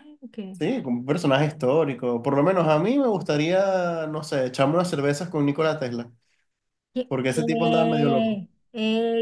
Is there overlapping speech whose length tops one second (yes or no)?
yes